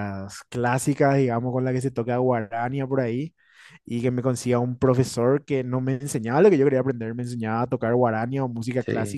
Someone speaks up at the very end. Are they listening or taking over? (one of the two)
listening